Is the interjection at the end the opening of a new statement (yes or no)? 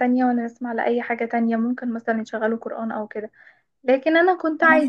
no